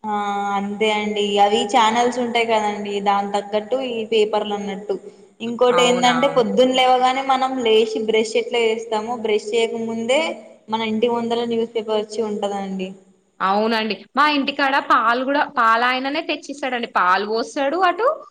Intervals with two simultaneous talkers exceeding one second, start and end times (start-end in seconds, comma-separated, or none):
none